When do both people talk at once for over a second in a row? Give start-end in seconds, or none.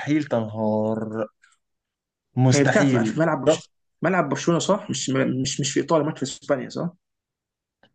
2.5-3.7